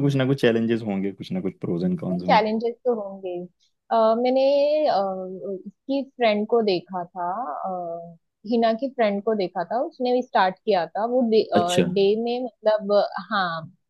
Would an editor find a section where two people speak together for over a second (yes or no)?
no